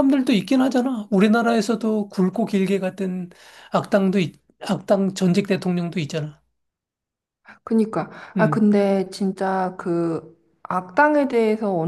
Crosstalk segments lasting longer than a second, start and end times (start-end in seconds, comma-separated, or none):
none